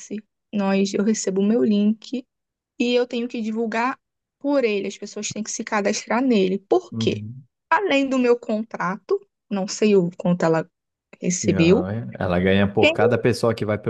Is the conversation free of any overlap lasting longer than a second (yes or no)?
yes